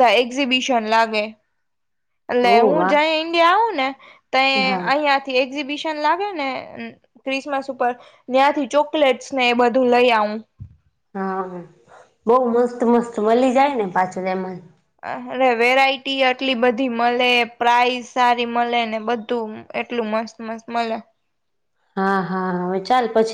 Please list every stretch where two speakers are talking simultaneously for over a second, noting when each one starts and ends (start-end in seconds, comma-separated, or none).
none